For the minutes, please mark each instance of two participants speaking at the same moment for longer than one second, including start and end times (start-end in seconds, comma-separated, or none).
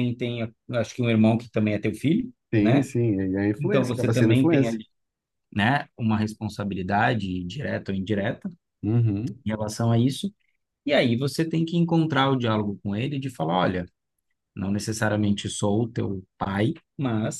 3.6-4.8